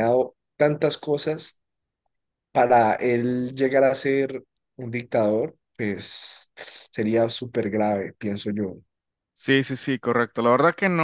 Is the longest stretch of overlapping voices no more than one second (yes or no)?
yes